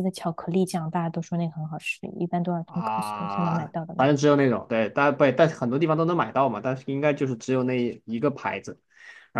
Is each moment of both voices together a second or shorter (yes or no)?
no